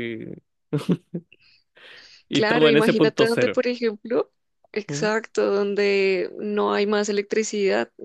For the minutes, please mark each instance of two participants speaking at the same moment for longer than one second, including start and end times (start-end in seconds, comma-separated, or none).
2.3-3.6